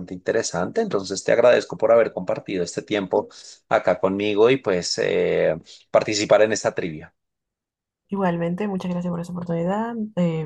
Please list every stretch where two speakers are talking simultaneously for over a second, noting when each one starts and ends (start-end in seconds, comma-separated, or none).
none